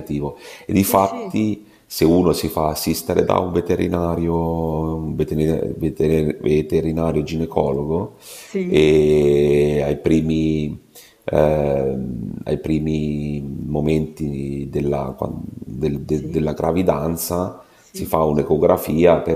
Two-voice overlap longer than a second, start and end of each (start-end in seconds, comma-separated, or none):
none